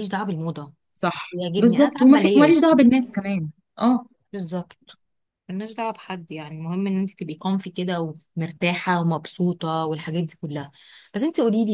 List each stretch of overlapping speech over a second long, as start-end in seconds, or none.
1.3-2.6